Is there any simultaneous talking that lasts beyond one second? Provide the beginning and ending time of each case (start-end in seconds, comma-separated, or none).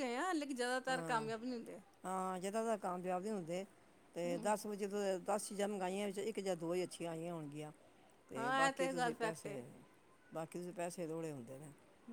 8.3-9.6